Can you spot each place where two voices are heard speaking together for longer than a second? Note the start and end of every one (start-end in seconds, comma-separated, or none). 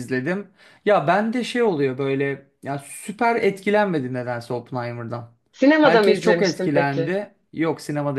5.8-7.2